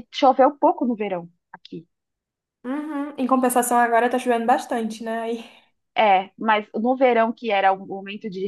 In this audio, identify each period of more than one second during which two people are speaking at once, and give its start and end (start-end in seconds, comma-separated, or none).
none